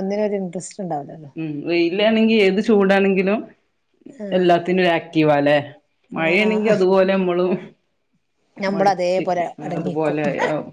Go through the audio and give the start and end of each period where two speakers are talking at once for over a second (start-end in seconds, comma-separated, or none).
8.7-10.2